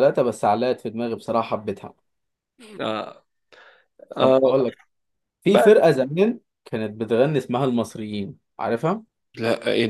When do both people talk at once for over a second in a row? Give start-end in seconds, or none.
none